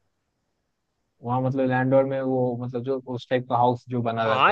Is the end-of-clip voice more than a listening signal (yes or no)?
yes